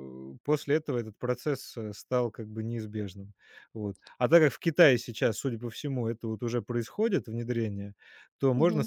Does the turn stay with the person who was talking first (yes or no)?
yes